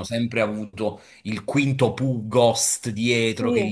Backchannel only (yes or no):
yes